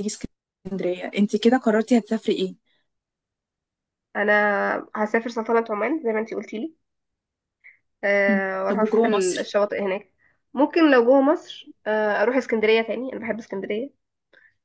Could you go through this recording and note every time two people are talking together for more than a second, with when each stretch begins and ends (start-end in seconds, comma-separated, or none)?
8.3-9.5